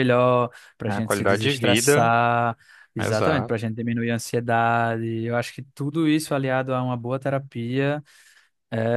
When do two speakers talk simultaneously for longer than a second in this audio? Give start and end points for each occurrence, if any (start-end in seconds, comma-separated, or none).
0.9-2.1